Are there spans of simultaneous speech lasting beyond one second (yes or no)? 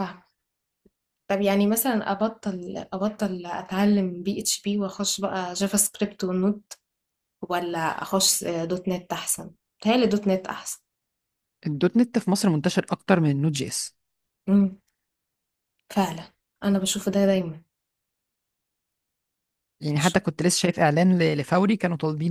no